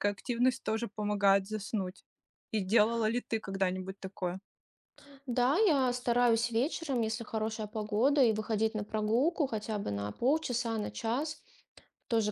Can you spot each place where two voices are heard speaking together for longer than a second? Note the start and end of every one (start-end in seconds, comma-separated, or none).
none